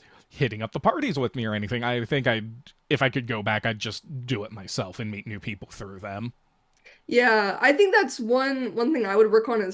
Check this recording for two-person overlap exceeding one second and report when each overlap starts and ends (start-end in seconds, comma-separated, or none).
none